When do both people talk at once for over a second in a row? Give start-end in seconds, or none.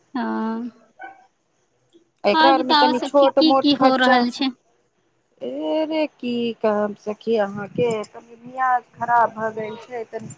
2.4-4.2